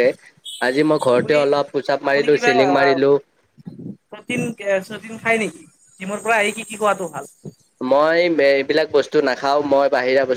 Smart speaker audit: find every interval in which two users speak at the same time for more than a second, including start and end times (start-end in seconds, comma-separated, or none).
none